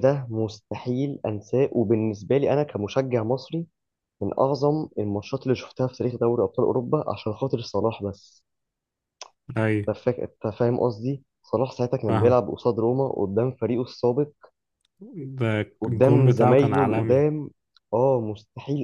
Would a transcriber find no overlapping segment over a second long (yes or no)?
no